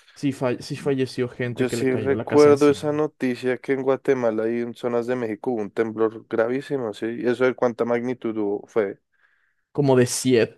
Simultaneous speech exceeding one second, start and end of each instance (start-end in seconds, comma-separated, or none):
1.4-2.8